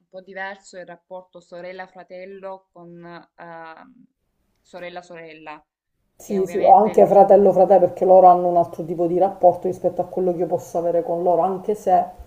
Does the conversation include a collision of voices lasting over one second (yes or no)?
yes